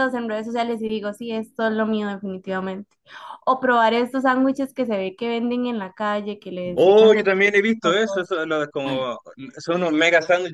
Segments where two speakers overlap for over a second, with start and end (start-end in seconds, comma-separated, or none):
6.7-8.3